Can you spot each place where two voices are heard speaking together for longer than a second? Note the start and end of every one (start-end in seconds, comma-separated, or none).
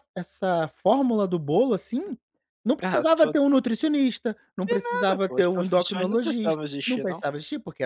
4.8-7.2